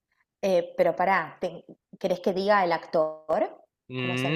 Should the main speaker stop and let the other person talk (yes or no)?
yes